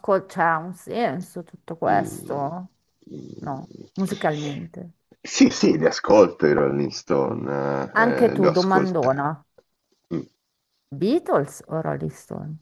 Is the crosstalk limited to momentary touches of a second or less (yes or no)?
no